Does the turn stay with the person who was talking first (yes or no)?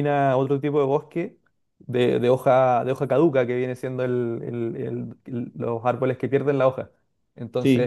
yes